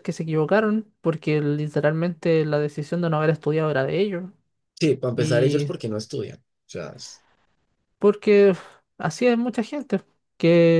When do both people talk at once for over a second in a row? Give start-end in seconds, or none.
none